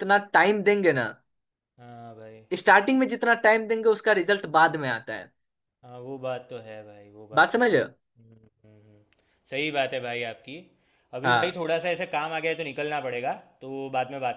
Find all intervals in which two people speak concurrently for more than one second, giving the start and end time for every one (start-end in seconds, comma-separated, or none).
none